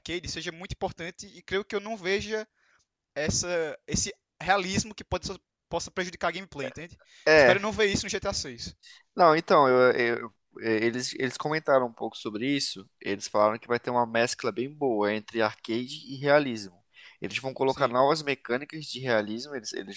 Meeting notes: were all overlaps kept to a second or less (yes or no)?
yes